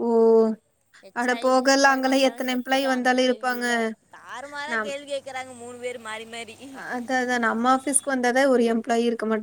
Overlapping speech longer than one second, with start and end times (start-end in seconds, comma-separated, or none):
1.2-3.6